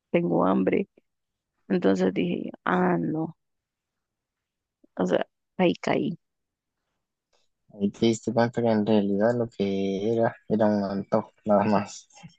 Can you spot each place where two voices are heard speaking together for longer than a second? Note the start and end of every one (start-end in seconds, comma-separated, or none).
none